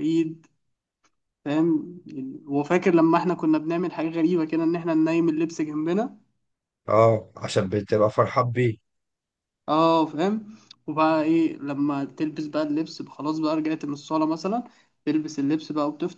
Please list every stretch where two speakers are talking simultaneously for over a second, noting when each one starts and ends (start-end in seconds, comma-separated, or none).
none